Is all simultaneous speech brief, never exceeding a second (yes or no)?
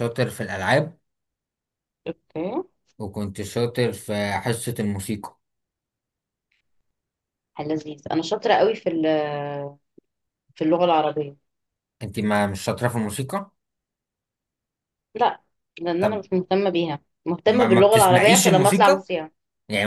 no